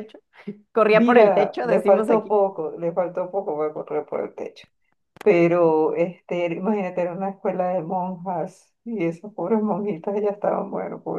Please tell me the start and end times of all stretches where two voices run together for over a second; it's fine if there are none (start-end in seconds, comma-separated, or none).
0.9-2.4